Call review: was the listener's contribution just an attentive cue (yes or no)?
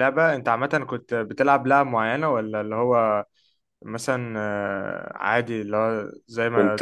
no